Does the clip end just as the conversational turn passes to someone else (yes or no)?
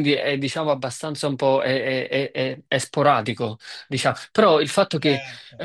no